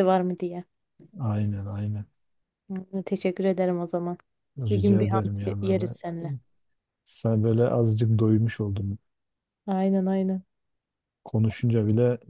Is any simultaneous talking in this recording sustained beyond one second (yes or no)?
yes